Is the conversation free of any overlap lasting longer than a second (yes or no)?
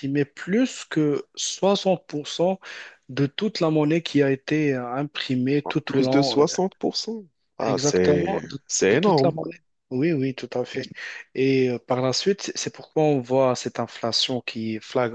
no